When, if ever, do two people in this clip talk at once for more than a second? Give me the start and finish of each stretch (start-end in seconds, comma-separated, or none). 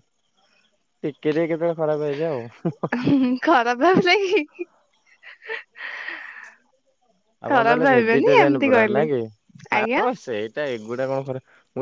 7.5-9.0